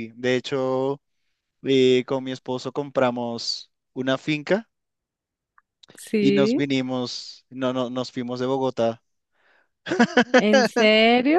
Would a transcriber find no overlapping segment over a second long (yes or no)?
yes